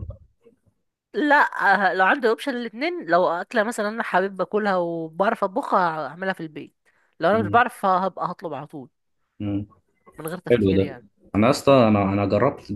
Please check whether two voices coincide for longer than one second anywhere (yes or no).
no